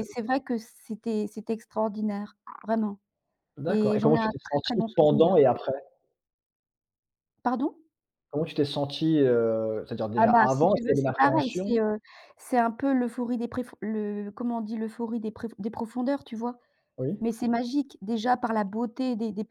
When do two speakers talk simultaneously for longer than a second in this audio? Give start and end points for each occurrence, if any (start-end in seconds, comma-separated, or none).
3.7-5.4, 10.2-11.7